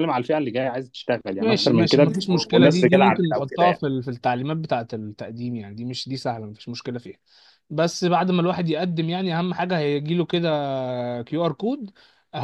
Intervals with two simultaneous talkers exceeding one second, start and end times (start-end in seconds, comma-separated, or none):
1.4-3.8